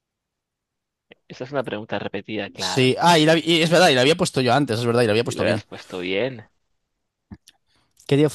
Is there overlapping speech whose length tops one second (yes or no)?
no